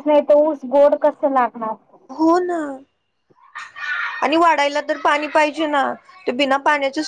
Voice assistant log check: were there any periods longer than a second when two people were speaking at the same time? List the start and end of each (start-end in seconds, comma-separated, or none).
none